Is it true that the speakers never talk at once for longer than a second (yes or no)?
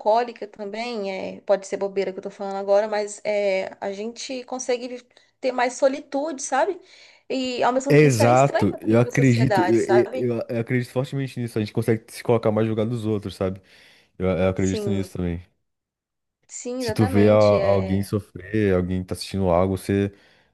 no